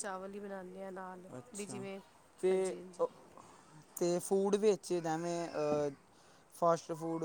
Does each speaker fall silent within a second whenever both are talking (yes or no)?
yes